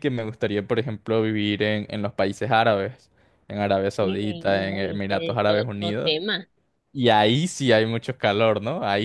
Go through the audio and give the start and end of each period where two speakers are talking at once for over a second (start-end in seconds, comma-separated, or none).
4.0-6.1